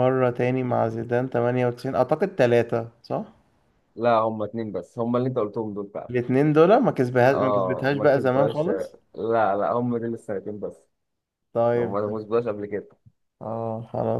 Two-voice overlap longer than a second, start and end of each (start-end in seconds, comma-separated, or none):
7.3-8.9